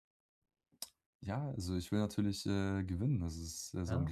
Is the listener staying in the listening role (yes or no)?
no